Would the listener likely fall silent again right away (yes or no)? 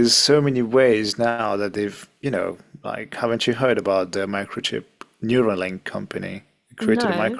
yes